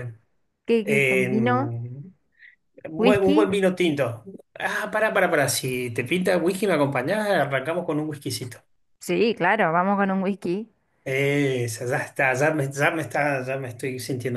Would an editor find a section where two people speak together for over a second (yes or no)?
no